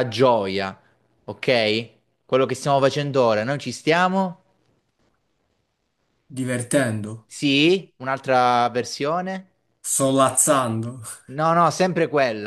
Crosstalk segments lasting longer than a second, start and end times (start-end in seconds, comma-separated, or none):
none